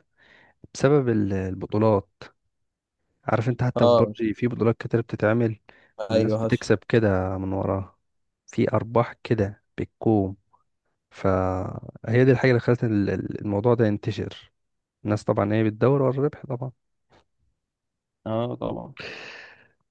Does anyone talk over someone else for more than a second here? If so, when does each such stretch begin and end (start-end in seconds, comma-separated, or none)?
none